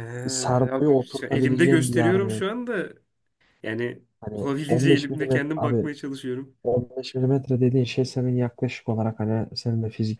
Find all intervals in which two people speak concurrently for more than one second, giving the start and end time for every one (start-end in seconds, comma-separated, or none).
0.7-2.5, 4.2-5.9